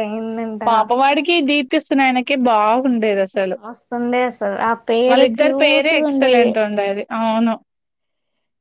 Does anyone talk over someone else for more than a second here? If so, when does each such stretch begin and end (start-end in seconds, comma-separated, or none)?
5.1-6.5